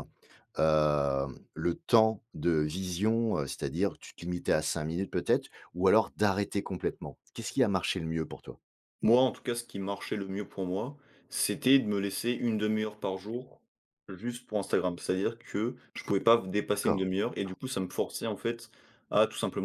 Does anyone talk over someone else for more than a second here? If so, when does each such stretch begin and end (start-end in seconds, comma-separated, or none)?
none